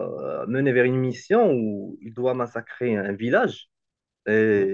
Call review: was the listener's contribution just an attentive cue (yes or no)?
yes